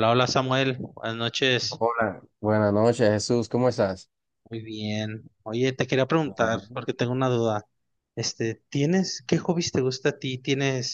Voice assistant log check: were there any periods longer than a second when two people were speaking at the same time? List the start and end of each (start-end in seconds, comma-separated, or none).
none